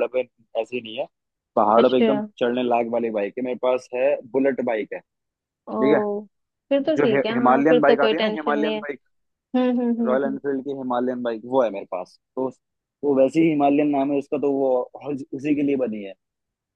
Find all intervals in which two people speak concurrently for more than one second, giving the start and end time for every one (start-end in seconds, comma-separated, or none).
7.0-8.8